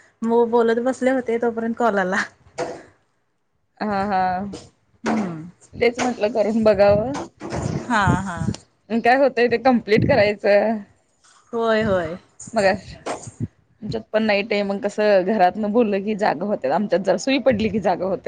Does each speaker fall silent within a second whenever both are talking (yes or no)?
yes